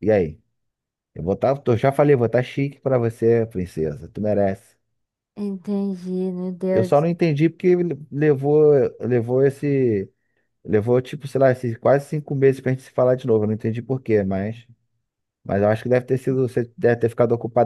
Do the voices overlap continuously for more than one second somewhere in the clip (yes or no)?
no